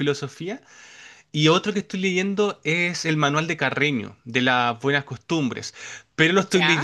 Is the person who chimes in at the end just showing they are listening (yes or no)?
yes